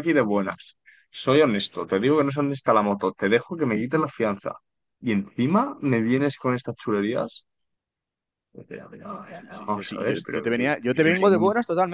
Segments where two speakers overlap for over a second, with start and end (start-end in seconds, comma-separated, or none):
9.2-11.3